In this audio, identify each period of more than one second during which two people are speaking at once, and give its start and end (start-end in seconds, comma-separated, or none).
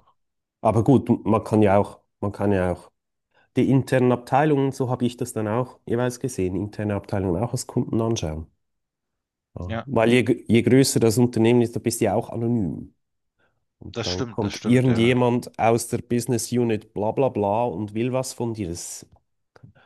13.9-15.2